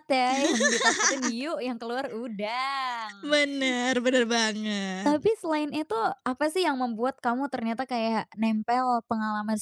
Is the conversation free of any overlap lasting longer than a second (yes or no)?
yes